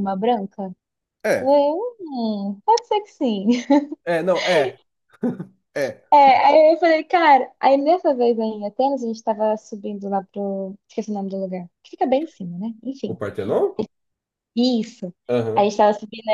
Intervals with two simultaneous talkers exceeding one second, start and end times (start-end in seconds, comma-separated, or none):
none